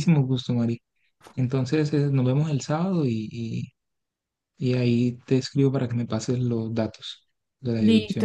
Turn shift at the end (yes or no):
yes